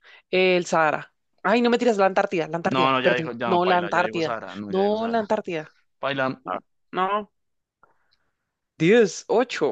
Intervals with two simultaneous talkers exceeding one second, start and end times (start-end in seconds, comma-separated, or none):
2.7-5.3